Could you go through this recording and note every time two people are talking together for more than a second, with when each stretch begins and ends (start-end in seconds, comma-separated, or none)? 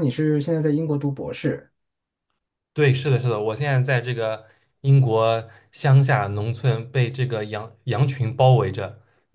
none